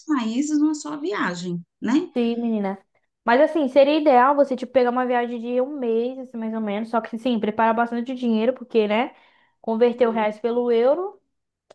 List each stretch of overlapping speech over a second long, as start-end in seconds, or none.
none